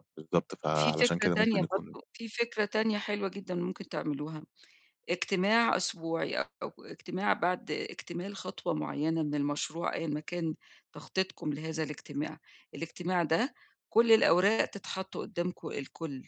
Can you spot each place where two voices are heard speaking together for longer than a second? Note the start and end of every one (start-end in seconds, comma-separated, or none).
0.7-1.9